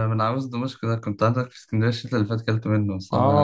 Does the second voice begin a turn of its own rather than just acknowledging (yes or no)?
yes